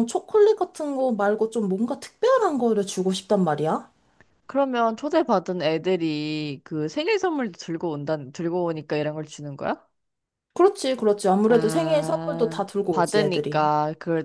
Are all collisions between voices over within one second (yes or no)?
no